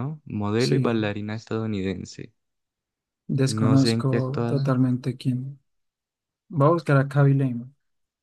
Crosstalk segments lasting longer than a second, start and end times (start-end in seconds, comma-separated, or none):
3.5-4.8